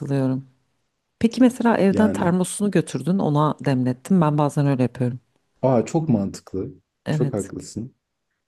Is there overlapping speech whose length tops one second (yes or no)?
no